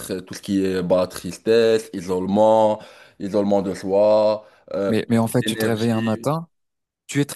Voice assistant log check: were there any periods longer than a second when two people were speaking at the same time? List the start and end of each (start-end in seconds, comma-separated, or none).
4.9-6.3